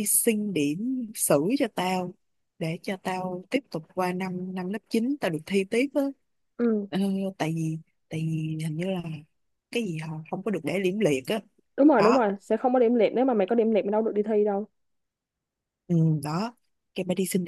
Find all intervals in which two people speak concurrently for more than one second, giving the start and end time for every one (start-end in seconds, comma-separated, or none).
none